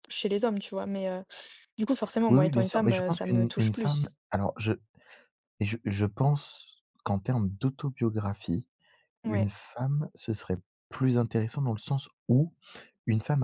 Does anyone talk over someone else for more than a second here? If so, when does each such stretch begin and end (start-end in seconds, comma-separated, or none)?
2.3-4.1